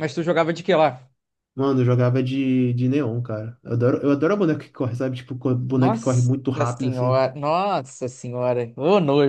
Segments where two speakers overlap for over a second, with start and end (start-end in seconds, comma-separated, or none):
5.7-7.2